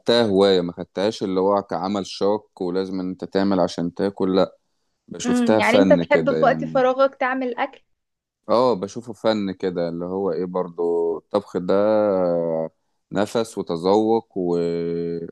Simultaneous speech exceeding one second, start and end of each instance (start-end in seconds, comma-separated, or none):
5.2-6.9